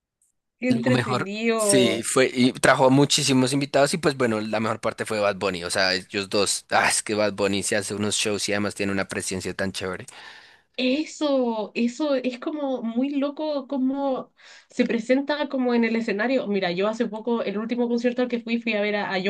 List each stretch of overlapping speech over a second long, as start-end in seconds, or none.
0.7-2.1